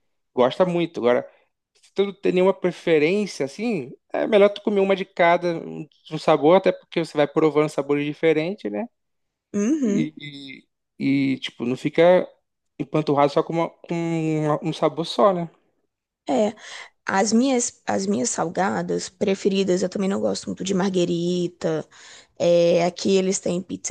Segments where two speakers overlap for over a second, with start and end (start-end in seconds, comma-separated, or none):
none